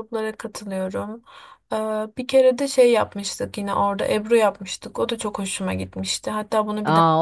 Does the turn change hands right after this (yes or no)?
yes